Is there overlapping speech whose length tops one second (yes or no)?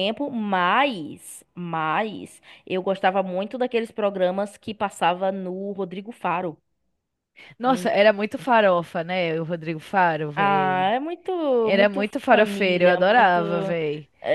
yes